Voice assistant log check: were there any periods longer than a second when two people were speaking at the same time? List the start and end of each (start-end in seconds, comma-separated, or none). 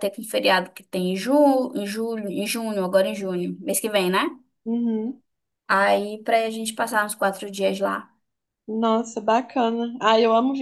none